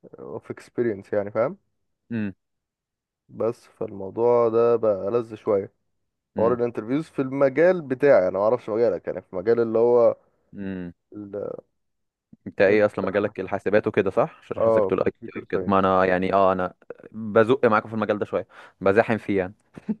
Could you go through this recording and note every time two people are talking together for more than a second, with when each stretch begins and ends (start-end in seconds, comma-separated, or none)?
14.6-15.9